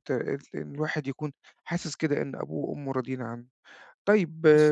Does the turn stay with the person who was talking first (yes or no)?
yes